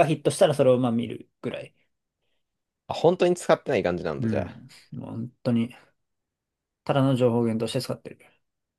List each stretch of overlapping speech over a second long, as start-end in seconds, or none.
none